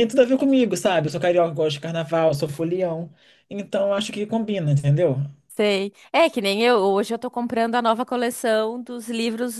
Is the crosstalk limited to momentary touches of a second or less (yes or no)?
yes